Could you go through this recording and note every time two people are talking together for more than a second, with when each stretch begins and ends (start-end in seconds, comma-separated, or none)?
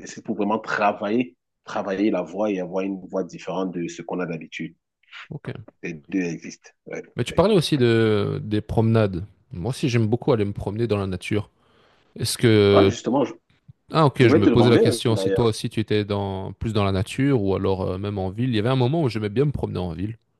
14.2-15.5